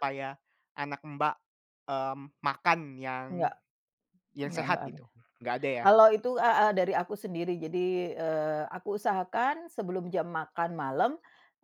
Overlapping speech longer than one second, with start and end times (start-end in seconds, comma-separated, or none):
none